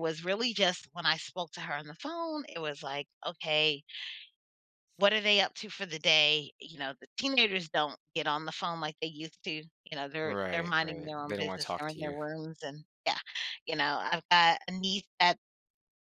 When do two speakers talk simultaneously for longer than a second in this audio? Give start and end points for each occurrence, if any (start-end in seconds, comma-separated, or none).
10.2-12.2